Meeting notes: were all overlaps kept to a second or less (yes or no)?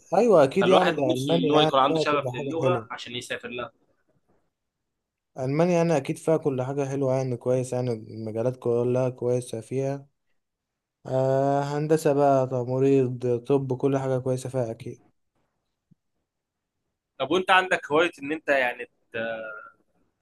no